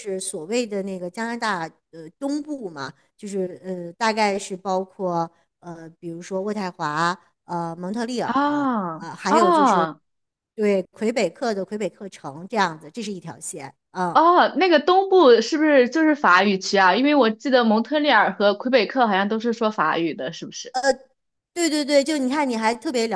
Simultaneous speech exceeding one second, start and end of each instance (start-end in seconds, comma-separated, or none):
8.2-9.9